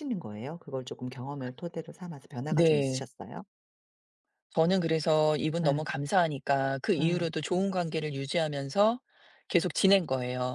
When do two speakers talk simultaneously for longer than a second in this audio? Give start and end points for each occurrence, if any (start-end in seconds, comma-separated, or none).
none